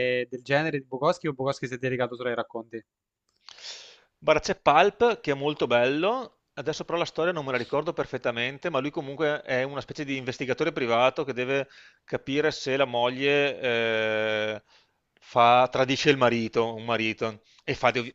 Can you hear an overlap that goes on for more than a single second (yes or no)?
no